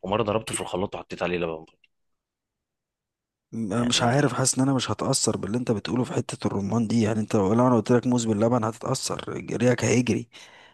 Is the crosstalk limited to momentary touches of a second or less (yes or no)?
yes